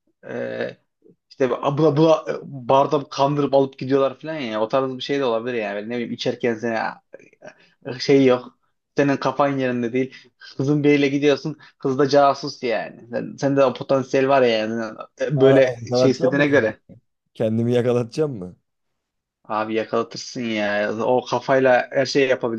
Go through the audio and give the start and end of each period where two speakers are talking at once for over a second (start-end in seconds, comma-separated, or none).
15.4-16.7